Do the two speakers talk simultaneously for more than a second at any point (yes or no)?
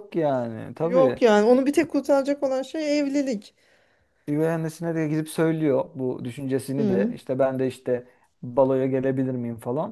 no